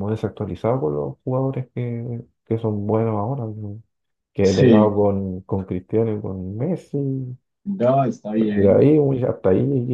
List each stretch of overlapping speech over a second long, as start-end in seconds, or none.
none